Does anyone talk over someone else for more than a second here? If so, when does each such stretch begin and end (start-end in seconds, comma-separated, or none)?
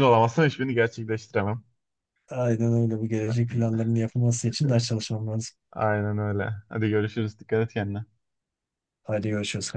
none